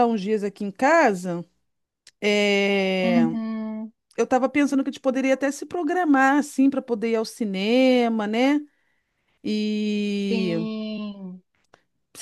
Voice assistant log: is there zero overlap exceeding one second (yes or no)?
yes